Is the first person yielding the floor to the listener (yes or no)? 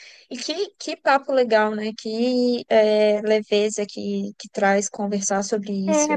yes